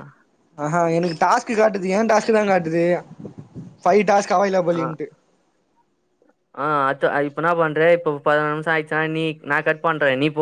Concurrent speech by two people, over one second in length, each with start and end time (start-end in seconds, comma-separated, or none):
none